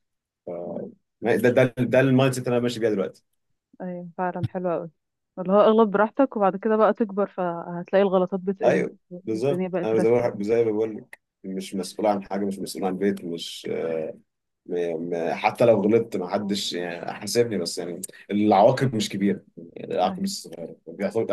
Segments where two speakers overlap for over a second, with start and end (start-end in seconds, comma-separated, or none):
8.6-10.4